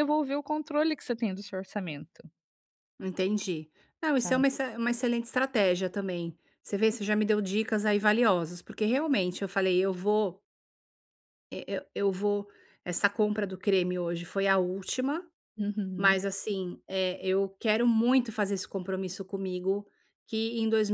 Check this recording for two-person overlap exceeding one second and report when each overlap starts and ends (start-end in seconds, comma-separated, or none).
none